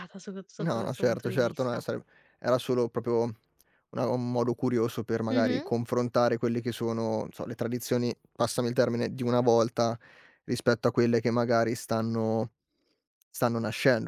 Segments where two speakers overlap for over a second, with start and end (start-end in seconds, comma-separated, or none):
0.6-1.9